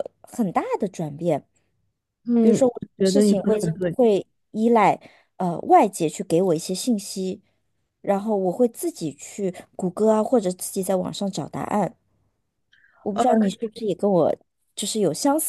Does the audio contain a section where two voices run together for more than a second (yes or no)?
yes